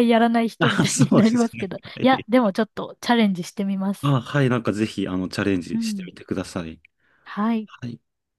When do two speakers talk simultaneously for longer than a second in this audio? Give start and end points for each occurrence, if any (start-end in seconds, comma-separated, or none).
0.6-2.3